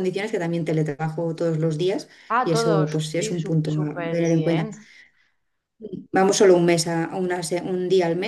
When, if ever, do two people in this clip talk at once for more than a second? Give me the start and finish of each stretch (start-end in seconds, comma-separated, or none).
2.3-4.7